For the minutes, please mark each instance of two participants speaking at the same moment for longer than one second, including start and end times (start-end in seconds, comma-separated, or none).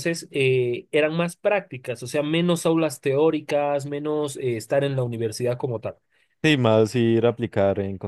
none